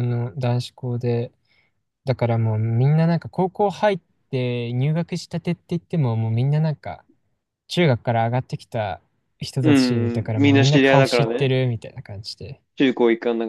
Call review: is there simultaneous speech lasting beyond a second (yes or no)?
yes